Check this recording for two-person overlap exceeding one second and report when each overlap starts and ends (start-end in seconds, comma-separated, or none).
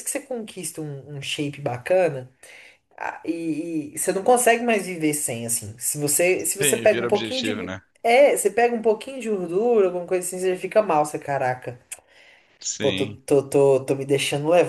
6.6-7.8